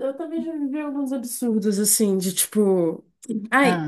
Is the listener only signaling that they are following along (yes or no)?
yes